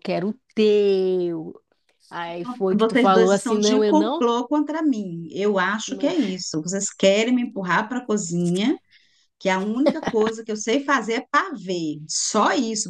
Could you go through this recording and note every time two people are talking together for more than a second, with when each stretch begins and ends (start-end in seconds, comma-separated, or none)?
2.8-4.2